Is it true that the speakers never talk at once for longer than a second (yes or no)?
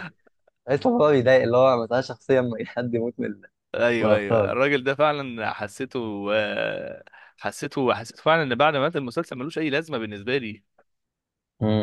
yes